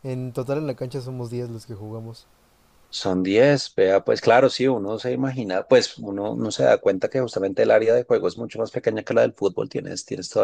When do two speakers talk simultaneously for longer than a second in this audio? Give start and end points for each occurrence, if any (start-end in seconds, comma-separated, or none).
none